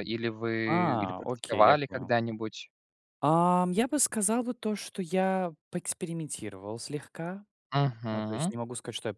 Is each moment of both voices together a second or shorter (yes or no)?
no